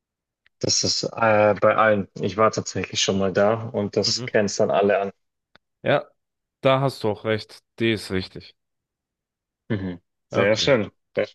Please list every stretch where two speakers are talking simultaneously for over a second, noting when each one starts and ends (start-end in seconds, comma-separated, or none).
none